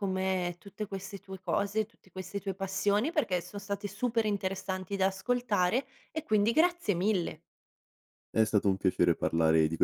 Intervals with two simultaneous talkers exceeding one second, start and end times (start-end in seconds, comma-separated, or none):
none